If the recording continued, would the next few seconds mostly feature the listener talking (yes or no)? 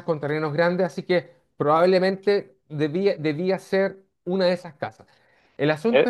yes